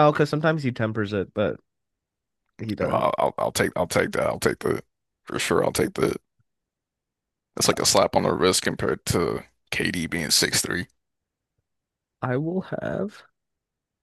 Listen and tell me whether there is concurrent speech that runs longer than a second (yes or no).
no